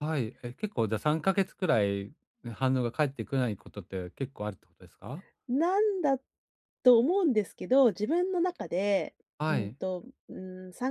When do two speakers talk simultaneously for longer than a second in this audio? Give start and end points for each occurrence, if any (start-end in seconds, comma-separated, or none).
none